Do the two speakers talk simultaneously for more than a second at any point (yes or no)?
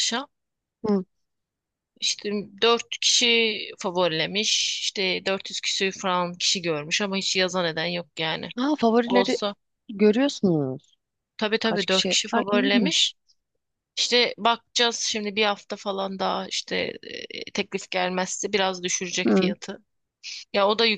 yes